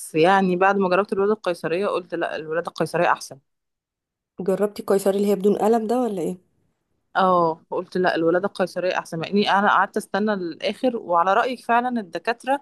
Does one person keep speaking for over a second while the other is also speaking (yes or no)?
no